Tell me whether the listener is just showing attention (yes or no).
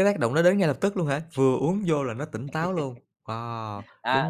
no